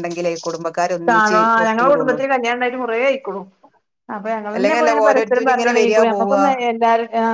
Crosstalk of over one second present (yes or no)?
yes